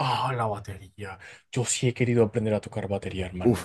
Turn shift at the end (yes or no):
yes